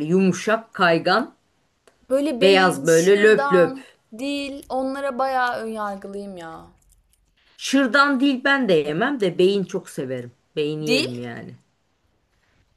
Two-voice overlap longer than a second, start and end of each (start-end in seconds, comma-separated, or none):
2.4-3.8